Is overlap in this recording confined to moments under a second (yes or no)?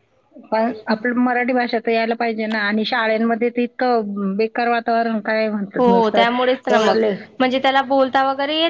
yes